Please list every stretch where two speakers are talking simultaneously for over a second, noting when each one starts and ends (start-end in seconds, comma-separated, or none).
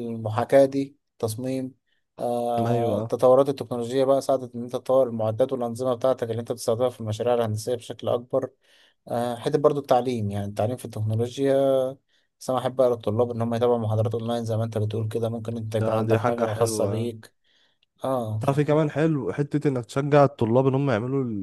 15.8-17.1